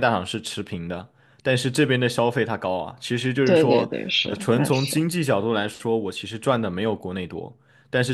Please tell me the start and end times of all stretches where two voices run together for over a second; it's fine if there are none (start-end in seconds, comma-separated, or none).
3.4-5.0